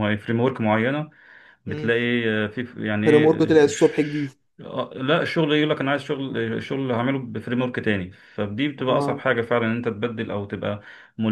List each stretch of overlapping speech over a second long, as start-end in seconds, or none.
3.0-4.3